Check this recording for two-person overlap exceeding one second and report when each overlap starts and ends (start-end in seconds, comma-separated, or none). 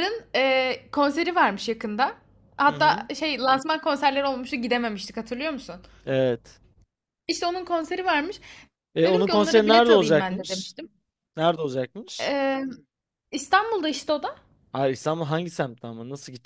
9.0-10.8